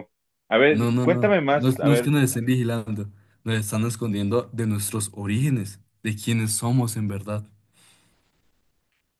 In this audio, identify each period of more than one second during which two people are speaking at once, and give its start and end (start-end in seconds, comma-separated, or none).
0.7-2.1